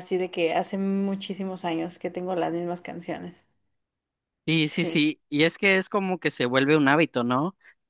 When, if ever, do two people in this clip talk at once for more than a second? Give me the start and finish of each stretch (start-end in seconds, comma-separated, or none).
none